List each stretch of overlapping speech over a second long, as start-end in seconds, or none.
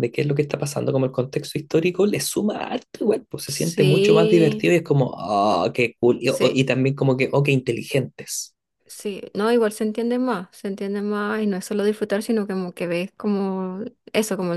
3.5-4.7